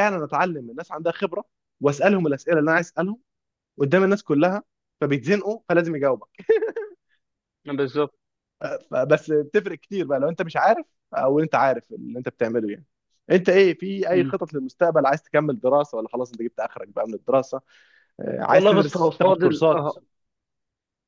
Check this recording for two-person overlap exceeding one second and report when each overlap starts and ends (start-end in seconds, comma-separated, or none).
18.5-19.9